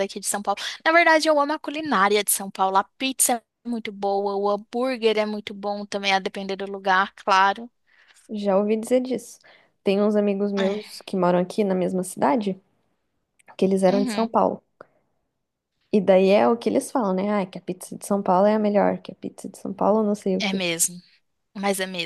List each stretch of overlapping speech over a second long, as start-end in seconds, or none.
none